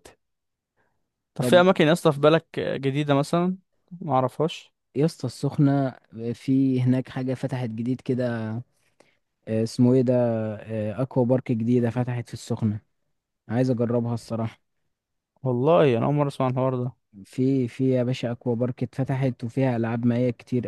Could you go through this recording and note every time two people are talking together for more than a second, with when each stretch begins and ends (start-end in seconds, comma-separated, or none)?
none